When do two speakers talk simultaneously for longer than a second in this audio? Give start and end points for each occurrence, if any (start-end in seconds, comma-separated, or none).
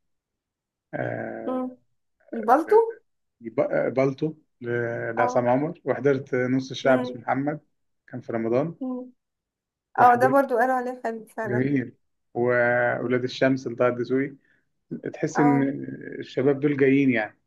none